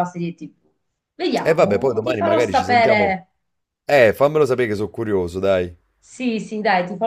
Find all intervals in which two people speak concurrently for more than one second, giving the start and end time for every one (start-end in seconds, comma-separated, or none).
1.4-3.2